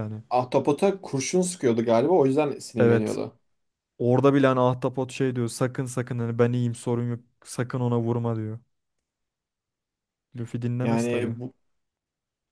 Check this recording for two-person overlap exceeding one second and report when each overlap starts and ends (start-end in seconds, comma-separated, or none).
none